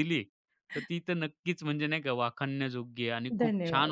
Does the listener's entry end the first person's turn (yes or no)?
no